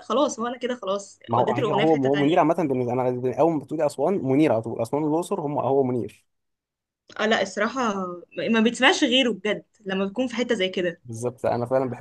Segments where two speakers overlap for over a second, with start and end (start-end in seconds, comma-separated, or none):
1.3-2.5